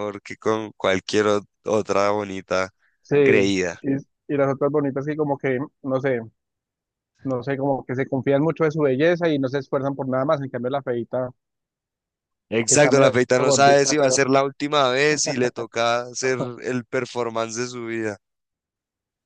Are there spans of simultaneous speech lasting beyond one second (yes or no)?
yes